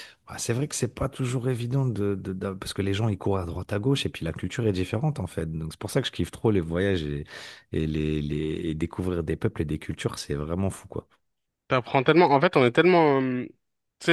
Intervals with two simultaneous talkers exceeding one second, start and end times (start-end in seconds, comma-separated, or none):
none